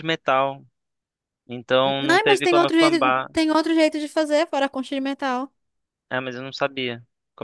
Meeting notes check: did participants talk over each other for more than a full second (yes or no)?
yes